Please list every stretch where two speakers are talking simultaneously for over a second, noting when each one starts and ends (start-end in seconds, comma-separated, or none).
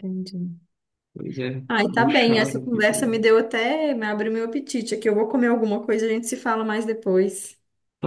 1.7-3.2